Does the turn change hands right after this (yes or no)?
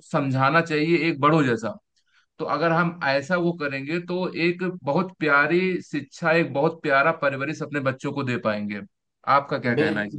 yes